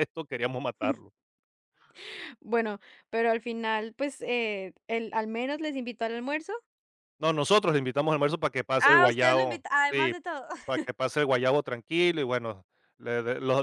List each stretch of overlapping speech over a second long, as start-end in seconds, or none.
8.8-10.1